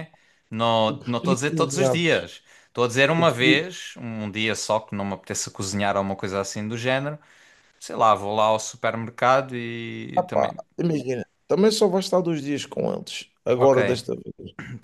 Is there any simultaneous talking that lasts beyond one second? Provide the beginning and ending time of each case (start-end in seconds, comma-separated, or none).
0.9-2.3